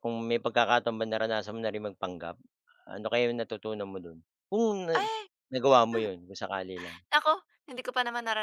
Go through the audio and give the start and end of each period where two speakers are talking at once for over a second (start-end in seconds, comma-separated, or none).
none